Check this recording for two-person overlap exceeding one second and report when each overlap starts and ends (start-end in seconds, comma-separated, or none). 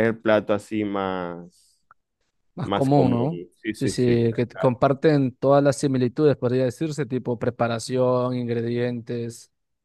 2.6-4.7